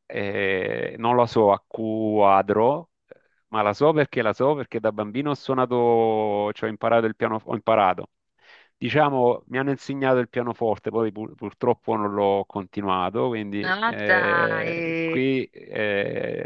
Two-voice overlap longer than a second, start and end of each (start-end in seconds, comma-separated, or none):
13.6-15.2